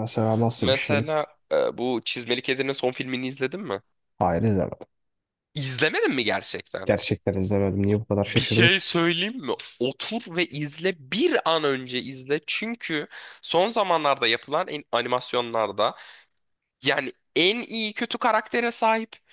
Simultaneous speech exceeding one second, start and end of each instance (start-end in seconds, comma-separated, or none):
none